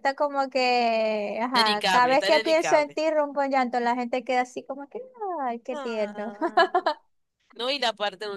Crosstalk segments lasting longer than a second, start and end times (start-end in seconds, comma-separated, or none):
1.5-3.0